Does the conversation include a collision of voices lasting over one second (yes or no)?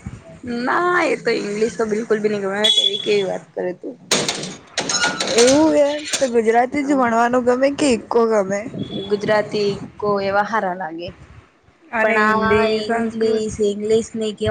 yes